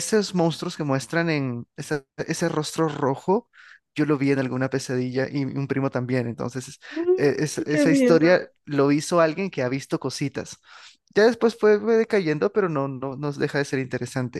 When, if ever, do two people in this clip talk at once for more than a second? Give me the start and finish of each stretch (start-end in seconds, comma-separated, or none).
7.2-8.4